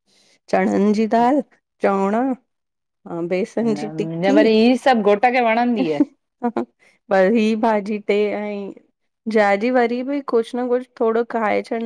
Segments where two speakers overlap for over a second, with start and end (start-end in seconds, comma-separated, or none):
none